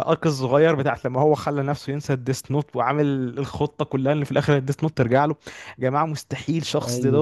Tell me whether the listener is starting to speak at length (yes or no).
no